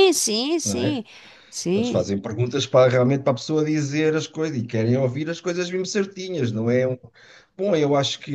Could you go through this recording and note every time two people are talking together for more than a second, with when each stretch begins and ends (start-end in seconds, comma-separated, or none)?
none